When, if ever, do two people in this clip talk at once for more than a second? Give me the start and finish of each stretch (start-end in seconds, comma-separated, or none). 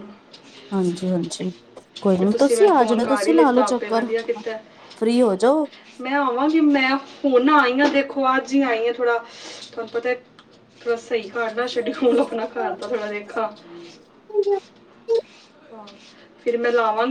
2.2-4.1